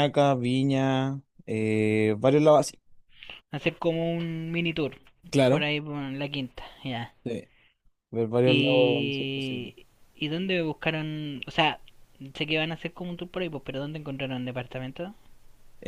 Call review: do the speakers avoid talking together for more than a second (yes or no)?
no